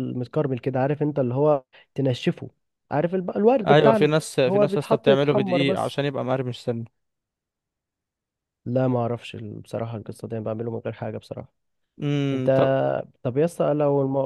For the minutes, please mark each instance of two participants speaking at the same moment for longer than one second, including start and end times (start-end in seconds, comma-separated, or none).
3.7-6.0